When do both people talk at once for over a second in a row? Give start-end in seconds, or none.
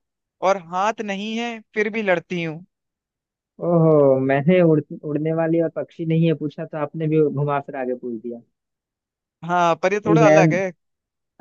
none